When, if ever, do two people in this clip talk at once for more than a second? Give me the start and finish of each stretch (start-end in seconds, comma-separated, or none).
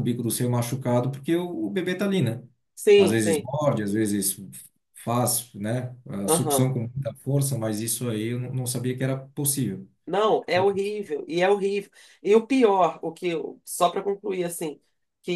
none